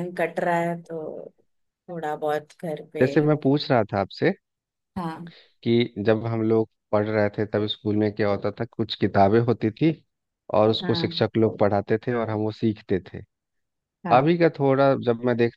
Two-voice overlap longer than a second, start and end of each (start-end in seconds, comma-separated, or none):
none